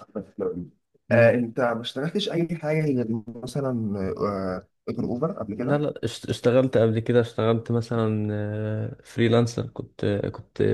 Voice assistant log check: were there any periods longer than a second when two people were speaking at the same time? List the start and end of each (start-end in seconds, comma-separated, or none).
none